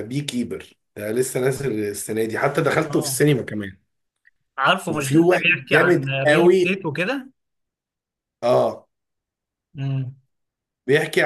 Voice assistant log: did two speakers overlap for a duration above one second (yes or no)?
yes